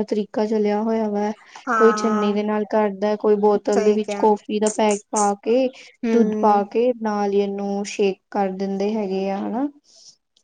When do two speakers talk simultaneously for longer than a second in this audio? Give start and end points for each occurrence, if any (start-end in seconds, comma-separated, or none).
none